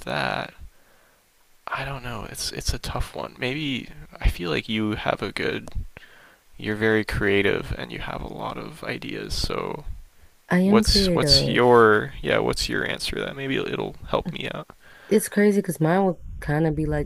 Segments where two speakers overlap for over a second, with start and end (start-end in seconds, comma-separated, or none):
10.6-11.9